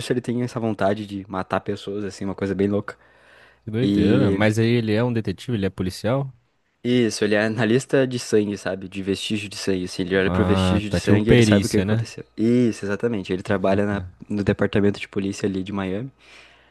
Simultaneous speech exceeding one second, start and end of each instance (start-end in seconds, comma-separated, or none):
10.2-12.1